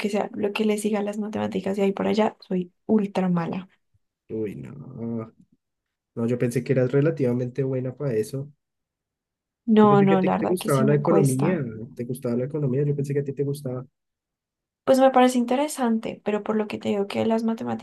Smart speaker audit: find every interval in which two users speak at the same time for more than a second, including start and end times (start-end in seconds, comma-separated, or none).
9.8-11.6